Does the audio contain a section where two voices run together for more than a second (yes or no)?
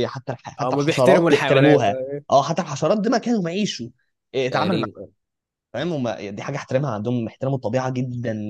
yes